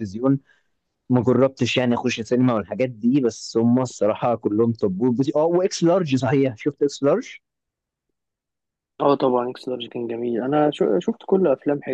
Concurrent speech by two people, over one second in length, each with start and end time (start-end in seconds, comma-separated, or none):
none